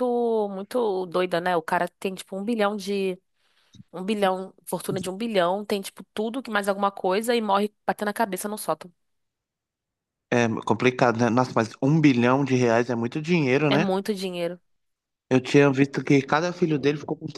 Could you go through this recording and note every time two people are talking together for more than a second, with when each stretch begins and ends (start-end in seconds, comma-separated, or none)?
none